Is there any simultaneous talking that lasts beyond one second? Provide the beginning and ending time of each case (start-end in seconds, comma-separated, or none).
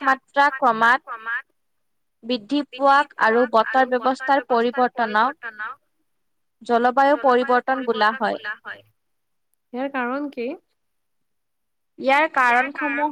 3.9-5.3